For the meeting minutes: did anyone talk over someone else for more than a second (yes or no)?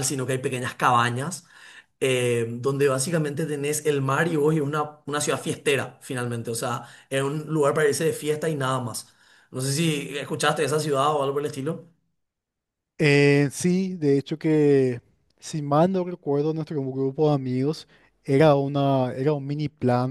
no